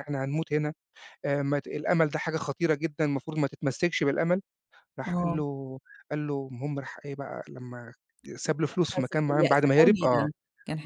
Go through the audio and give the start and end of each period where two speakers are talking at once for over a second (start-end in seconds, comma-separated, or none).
8.7-10.3